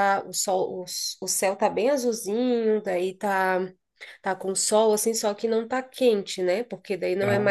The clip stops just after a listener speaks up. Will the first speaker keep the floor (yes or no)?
no